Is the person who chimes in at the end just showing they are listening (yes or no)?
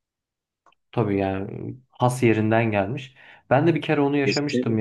yes